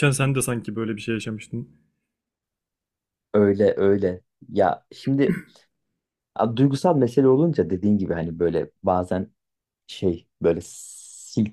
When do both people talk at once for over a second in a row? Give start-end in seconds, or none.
none